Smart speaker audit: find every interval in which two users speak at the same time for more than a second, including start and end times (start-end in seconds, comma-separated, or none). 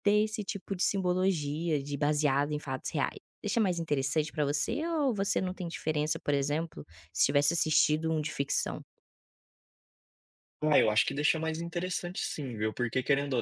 none